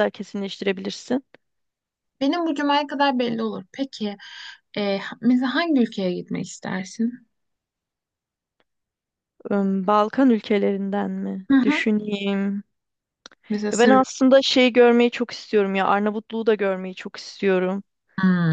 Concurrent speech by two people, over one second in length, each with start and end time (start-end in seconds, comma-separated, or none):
none